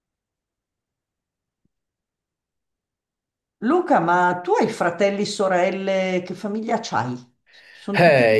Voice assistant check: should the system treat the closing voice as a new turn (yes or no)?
yes